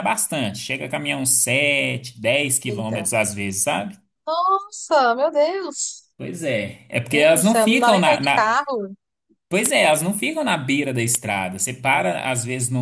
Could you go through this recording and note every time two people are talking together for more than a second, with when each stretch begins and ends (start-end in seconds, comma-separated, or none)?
7.1-8.6